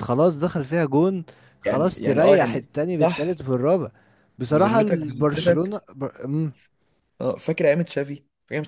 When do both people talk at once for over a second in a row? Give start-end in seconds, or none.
1.6-3.4, 4.5-5.8